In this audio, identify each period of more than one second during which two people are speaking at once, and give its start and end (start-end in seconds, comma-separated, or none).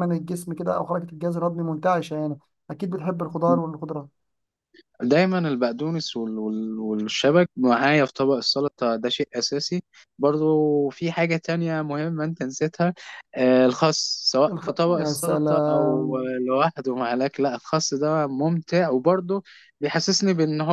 14.5-16.3